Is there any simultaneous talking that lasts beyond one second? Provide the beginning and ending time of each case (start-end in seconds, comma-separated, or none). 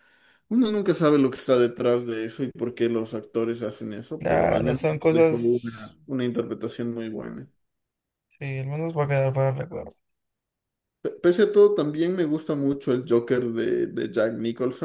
4.2-6.0